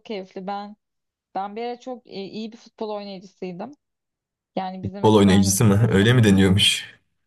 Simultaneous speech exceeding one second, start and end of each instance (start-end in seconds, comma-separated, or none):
4.8-6.0